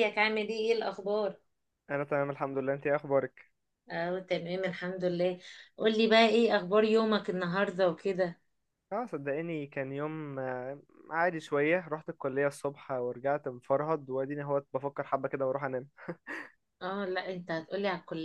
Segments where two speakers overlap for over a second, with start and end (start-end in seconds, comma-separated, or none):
none